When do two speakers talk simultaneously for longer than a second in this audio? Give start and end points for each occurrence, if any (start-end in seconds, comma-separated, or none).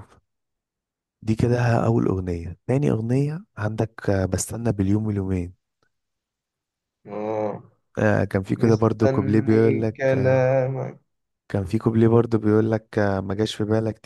8.5-10.5